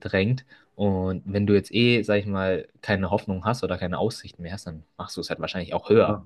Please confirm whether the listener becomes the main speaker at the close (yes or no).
yes